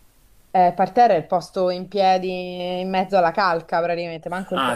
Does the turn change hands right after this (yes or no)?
yes